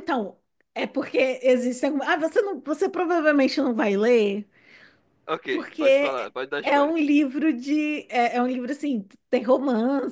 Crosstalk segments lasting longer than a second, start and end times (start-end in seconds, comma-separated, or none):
5.5-7.0